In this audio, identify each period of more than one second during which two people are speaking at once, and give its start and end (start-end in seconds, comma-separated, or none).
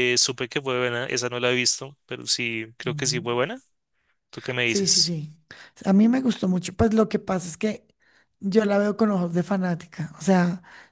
none